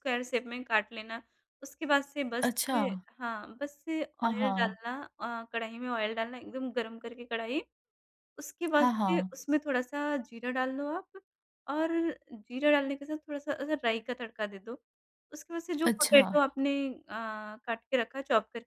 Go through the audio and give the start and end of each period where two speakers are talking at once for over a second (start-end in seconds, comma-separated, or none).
none